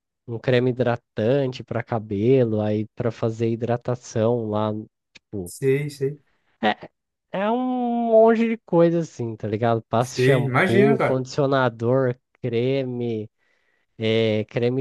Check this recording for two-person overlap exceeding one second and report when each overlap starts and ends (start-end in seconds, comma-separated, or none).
10.0-11.2